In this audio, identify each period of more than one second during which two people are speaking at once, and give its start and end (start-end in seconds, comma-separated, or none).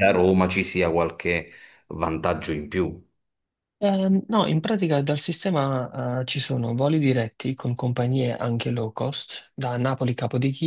none